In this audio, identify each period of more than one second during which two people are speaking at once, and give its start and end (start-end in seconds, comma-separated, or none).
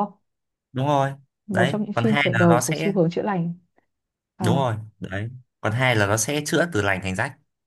1.5-2.9